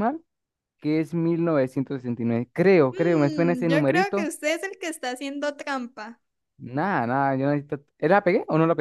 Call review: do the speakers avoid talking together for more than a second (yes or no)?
no